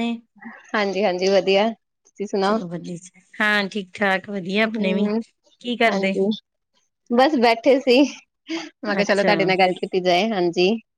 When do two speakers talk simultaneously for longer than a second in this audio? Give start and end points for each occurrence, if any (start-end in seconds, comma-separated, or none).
none